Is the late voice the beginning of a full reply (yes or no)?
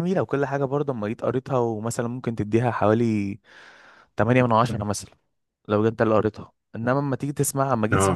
no